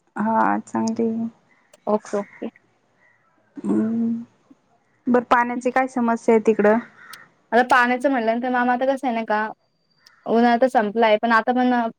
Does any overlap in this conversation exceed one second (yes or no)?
no